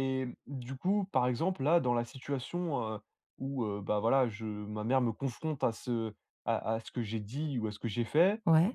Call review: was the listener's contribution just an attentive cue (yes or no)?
yes